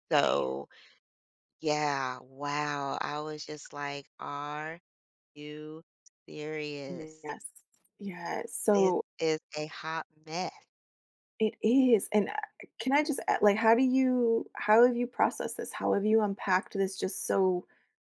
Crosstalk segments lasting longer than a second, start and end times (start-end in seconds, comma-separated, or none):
none